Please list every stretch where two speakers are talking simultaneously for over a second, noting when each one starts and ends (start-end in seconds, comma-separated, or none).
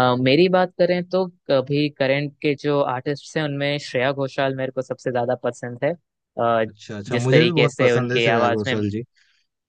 7.1-8.8